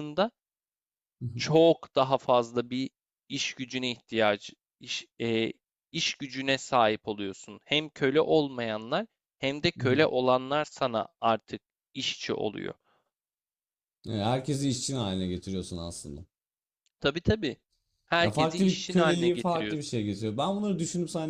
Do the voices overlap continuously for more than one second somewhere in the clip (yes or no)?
yes